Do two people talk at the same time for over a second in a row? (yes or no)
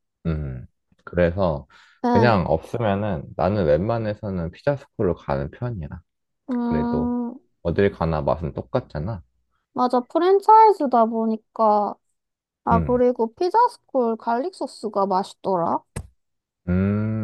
no